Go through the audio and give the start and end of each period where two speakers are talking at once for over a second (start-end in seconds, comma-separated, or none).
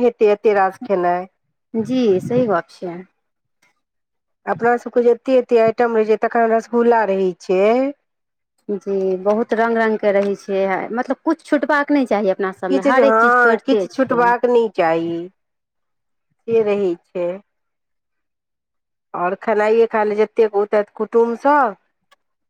12.7-14.3